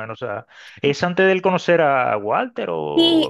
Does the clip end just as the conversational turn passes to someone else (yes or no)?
yes